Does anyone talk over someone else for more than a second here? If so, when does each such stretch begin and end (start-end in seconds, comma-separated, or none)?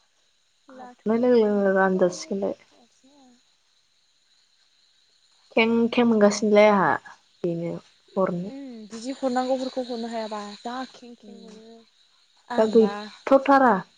0.8-2.5